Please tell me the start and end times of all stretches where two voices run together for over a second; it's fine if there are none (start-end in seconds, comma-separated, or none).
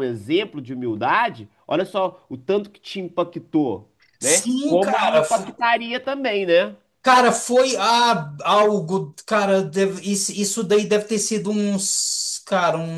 4.2-5.5